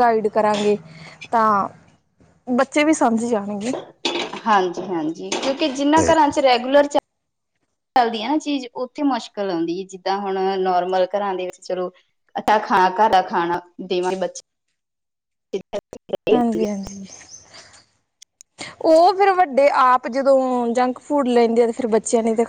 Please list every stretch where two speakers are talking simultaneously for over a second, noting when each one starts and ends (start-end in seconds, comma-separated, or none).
none